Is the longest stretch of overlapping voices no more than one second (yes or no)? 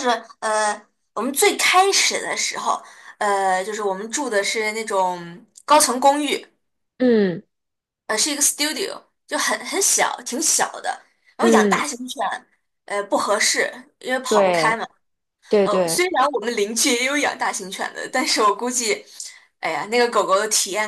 yes